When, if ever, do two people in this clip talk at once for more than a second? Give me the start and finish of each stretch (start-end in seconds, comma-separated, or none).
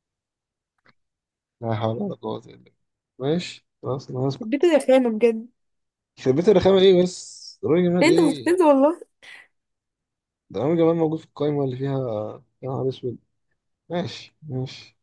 none